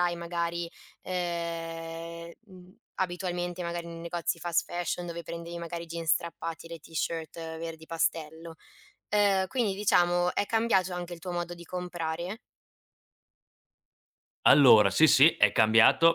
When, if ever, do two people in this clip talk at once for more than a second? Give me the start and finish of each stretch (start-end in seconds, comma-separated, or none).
none